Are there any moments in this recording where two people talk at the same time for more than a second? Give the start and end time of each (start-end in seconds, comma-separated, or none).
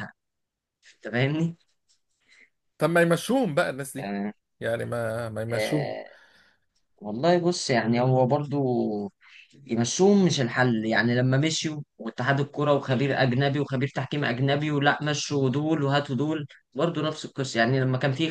none